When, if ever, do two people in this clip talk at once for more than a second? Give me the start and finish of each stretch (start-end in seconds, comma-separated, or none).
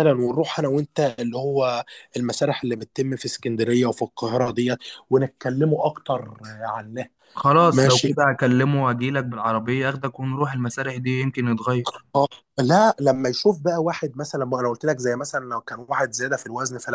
none